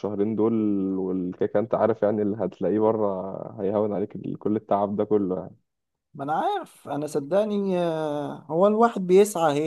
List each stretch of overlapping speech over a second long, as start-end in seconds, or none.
none